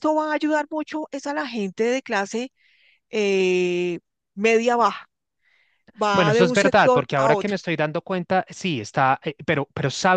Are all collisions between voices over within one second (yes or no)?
no